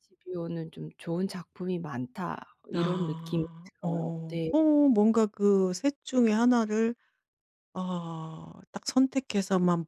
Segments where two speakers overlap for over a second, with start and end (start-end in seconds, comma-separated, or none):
2.7-4.5